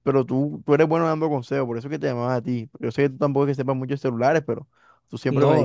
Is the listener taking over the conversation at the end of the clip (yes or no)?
no